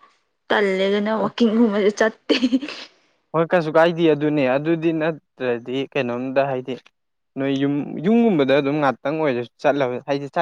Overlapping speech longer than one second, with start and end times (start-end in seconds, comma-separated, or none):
none